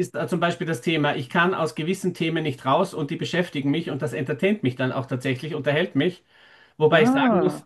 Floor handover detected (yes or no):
no